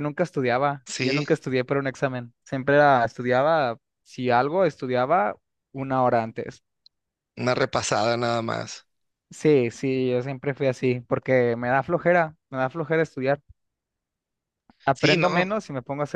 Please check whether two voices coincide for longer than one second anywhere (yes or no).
no